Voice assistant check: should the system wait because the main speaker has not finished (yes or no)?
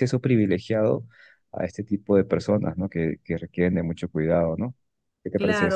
no